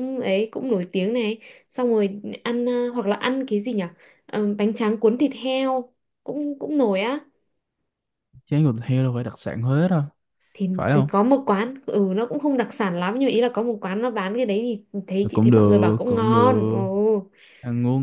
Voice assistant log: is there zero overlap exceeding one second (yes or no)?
no